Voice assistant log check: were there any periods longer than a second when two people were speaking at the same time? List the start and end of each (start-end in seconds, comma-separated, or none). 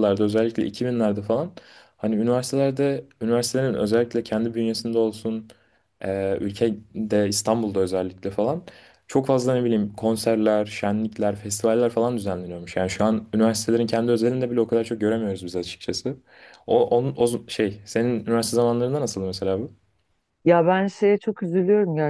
none